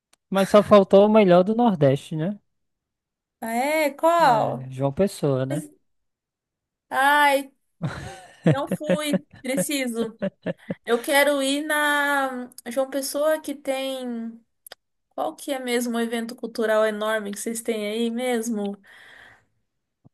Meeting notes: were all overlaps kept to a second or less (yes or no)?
yes